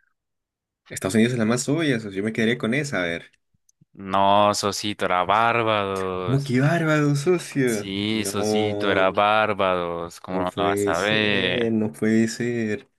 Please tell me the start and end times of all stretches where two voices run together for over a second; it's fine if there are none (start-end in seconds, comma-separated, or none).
7.6-9.1, 10.3-11.8